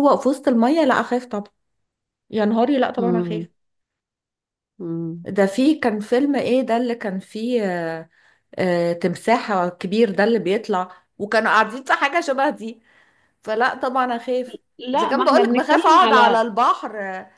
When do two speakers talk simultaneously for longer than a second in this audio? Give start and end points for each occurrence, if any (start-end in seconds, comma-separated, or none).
14.9-16.4